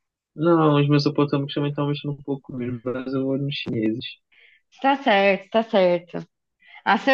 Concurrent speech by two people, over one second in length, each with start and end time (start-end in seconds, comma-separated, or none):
none